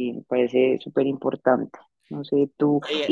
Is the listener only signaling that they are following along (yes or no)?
yes